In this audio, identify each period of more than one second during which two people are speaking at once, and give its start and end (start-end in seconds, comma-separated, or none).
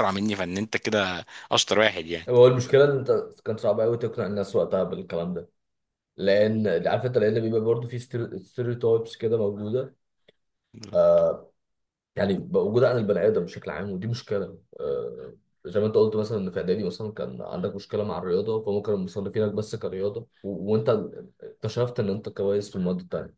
none